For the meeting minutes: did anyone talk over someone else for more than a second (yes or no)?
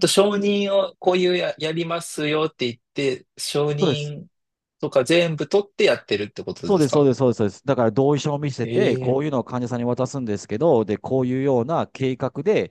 no